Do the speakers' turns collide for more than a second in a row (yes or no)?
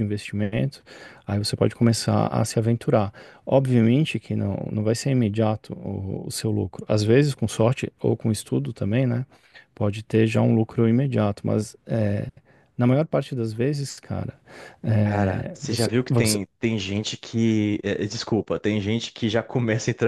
yes